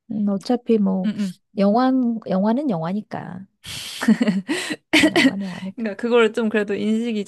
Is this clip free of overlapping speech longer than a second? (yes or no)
yes